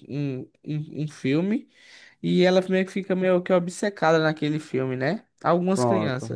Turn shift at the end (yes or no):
no